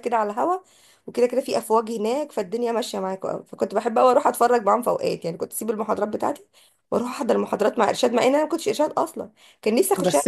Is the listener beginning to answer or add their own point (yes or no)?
yes